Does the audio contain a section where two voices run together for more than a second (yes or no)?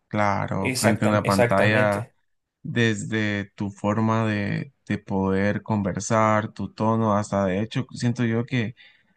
yes